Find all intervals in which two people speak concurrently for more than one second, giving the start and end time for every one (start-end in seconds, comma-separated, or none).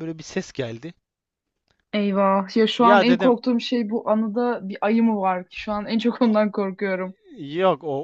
none